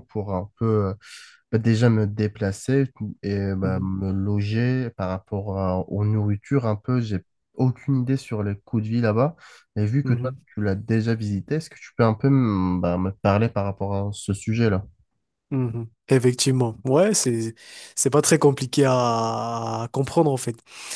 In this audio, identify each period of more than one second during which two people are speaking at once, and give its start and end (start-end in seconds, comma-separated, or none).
none